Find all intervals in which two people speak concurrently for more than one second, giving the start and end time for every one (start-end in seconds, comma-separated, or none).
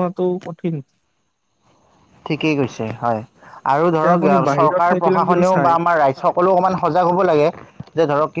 3.9-5.7